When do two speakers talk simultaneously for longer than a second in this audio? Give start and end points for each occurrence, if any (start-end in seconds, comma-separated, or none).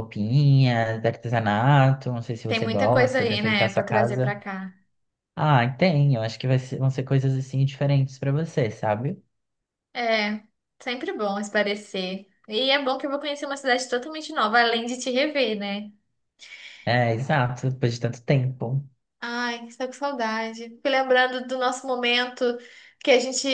2.5-4.3